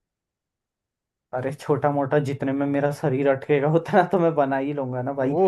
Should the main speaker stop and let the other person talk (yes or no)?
yes